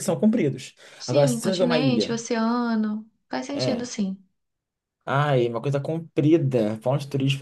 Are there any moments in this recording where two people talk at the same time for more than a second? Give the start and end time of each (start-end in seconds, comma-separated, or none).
1.0-2.2